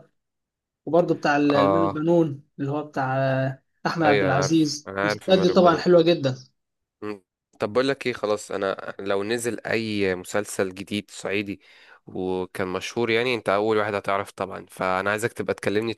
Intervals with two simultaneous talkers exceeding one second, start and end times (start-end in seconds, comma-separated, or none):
4.0-5.8